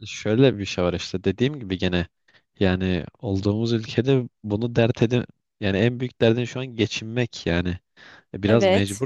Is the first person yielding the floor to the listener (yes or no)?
no